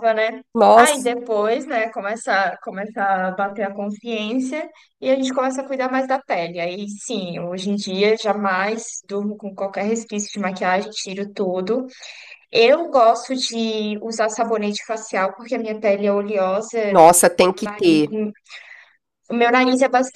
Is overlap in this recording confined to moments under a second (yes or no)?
yes